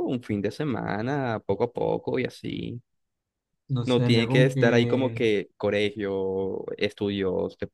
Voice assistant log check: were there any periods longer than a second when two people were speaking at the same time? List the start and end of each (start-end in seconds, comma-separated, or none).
3.8-5.2